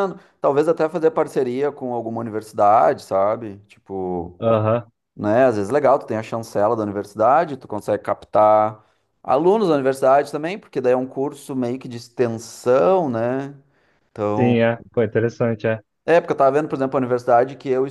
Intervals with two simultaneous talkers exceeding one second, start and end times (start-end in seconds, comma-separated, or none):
none